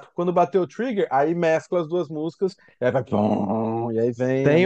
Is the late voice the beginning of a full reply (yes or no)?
yes